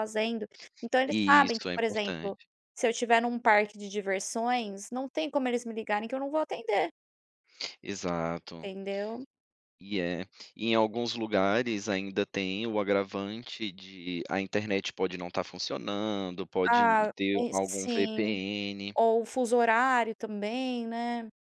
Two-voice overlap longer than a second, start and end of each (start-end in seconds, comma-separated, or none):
1.1-2.4, 16.6-18.4